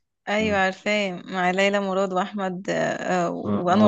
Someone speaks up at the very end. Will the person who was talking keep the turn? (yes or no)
no